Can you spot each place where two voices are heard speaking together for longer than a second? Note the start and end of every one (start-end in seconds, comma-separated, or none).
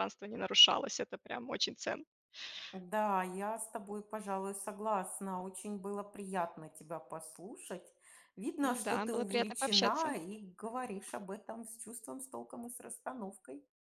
8.7-10.1